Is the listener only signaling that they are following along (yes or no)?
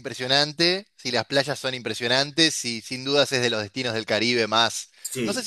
yes